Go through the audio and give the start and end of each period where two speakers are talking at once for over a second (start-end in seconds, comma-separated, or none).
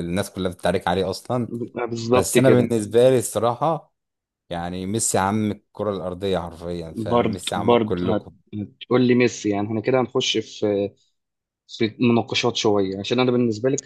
7.0-8.3